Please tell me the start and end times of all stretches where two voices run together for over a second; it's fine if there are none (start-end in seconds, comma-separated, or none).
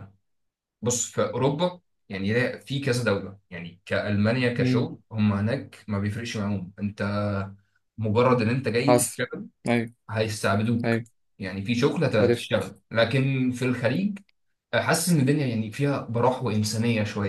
none